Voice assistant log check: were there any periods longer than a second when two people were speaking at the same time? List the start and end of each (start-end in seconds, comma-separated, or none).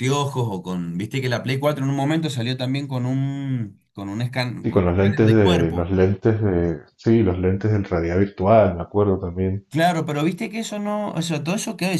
4.6-5.9